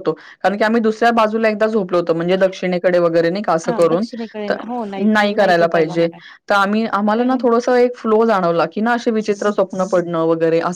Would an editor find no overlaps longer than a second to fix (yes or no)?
yes